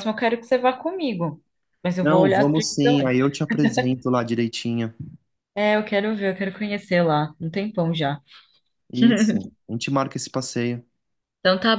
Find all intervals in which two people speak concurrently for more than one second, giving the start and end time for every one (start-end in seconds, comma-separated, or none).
2.0-3.4